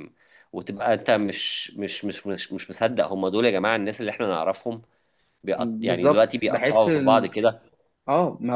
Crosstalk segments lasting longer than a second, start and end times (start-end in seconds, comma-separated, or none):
5.6-7.3